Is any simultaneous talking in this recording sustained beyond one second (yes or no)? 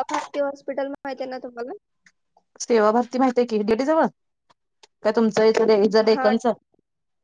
no